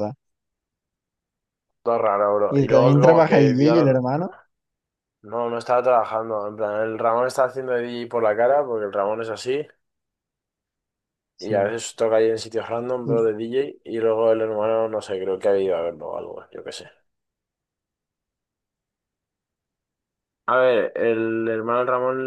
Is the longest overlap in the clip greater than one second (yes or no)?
yes